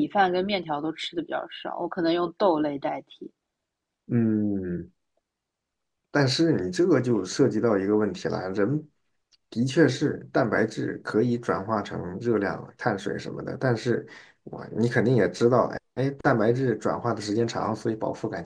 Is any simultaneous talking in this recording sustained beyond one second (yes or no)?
no